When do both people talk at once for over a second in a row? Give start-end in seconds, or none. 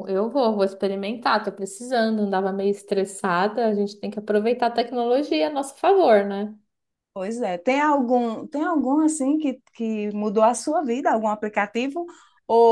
none